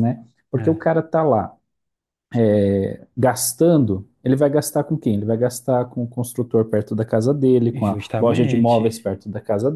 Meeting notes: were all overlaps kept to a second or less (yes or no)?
no